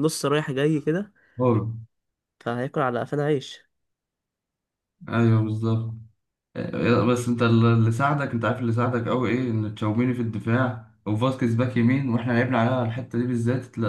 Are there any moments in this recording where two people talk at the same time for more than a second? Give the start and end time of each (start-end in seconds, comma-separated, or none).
none